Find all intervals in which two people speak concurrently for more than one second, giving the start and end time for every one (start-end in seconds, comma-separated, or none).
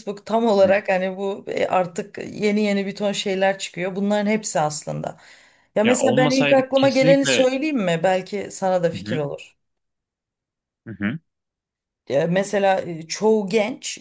5.8-7.5